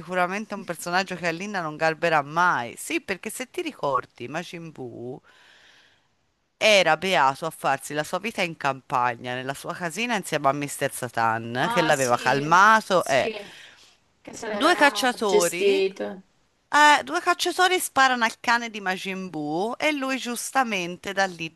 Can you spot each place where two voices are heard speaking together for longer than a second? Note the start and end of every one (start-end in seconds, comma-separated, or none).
14.5-15.8